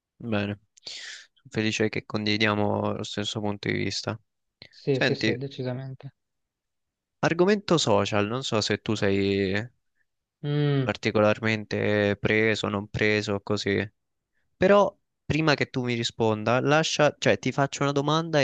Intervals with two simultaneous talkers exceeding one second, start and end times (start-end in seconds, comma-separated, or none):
none